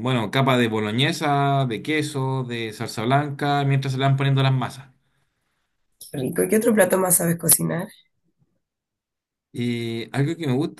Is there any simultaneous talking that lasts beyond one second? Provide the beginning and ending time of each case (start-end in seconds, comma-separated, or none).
none